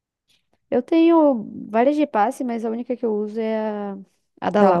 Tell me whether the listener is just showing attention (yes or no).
no